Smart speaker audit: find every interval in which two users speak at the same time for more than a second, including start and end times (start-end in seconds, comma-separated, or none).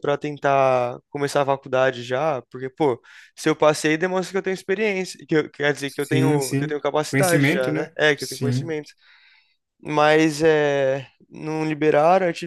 5.8-8.7